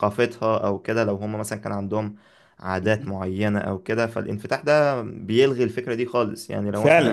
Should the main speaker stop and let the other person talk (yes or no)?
yes